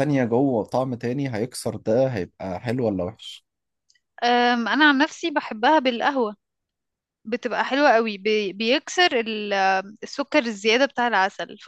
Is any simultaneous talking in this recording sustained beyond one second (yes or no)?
no